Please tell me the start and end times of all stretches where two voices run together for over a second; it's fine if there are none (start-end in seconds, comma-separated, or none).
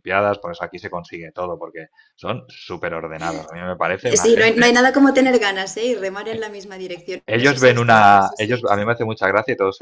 7.2-8.7